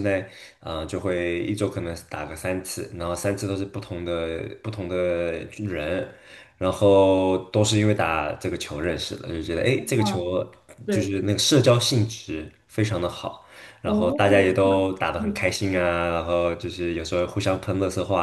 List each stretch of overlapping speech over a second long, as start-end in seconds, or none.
13.8-15.4